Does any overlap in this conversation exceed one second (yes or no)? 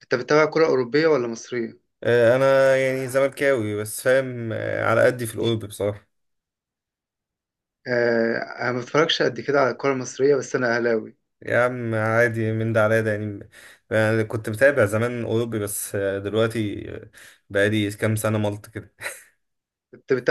no